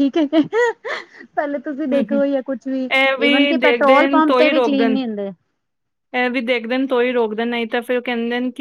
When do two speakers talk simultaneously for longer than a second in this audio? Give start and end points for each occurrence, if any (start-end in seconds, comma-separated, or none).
3.6-5.0